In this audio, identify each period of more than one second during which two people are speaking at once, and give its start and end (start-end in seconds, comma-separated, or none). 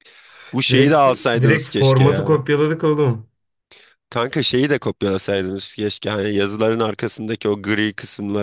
0.7-2.5